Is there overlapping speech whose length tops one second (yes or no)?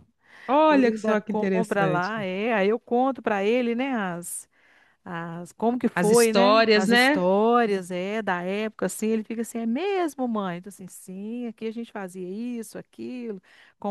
yes